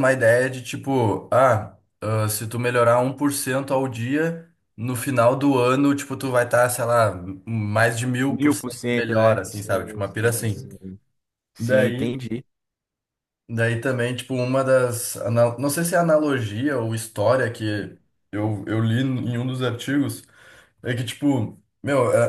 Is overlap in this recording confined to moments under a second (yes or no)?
no